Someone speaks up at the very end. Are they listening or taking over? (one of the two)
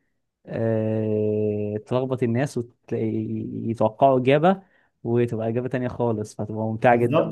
taking over